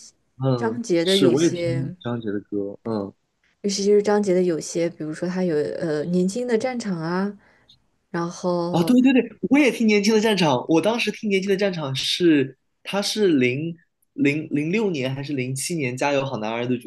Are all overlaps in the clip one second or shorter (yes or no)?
no